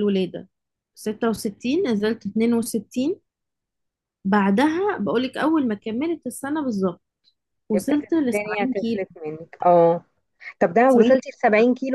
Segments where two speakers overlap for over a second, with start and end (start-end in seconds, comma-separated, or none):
7.8-9.2